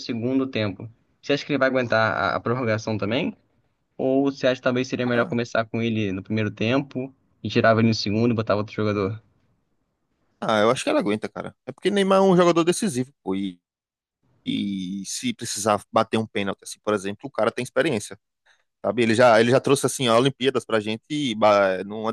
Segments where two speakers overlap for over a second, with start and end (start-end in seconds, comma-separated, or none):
none